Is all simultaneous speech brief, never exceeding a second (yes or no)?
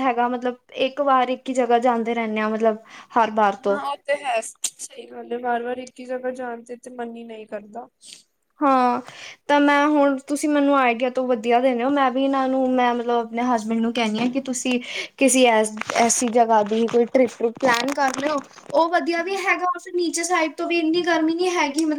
yes